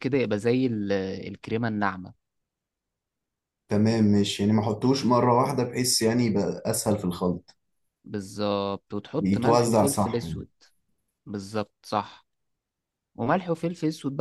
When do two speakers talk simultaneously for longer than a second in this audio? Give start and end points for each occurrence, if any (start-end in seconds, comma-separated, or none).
9.2-10.4